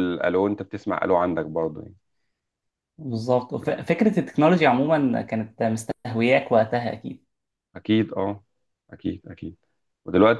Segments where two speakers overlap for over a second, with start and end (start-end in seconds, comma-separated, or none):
none